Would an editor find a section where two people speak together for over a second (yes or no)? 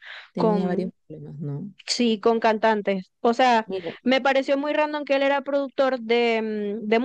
no